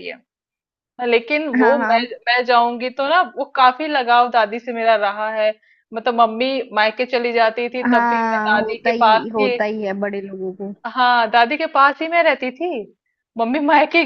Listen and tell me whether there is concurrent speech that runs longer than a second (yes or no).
yes